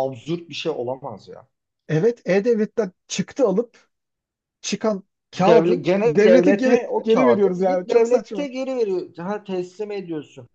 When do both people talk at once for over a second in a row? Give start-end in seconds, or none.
5.3-8.5